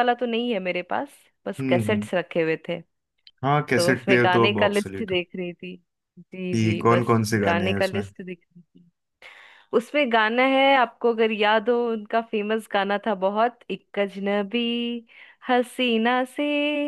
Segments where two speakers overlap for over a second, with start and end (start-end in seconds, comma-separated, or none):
3.8-5.1, 6.5-8.0